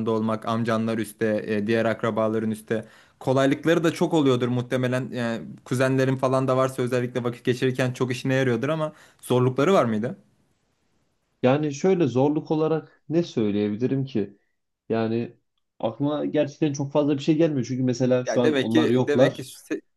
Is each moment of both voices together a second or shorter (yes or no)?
no